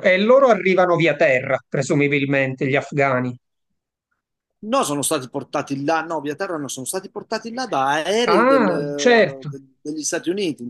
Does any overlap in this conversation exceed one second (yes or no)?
yes